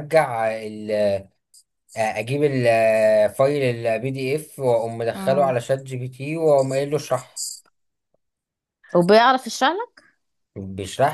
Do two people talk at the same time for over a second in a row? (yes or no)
no